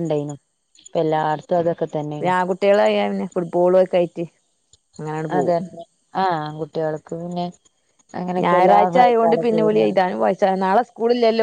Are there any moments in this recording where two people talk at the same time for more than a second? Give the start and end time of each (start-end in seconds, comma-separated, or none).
8.4-10.0